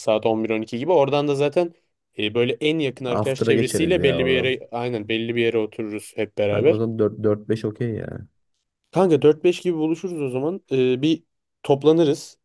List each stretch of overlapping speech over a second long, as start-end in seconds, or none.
3.1-4.6